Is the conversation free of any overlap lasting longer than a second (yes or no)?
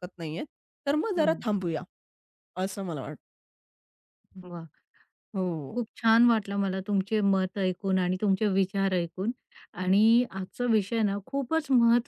yes